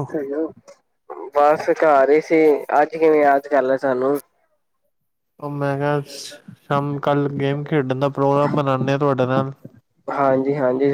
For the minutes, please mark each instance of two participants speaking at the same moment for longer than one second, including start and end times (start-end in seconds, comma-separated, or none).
none